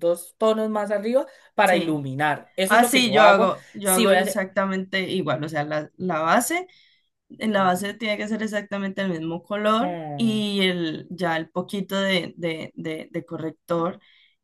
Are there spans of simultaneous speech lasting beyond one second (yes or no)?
yes